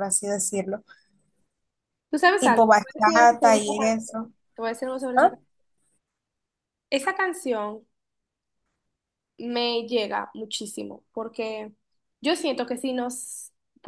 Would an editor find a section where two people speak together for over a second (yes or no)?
yes